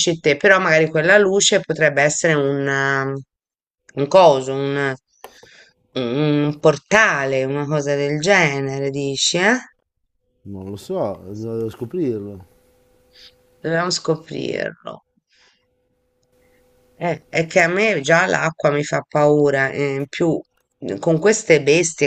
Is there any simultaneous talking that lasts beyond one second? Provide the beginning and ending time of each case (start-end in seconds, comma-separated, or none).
none